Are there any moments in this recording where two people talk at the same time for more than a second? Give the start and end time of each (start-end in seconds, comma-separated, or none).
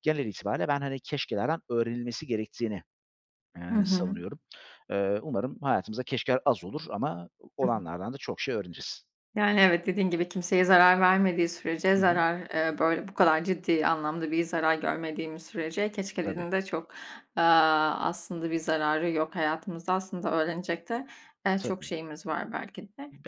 none